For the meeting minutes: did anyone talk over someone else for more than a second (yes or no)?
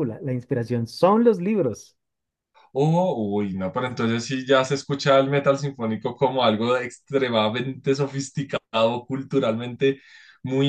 no